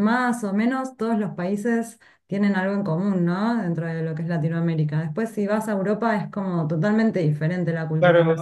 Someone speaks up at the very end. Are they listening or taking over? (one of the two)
taking over